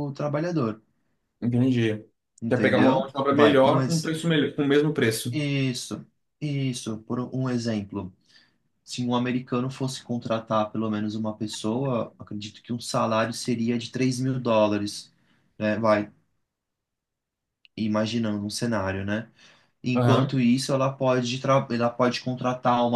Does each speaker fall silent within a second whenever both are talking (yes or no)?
no